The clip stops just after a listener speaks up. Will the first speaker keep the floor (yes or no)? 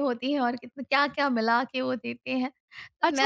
no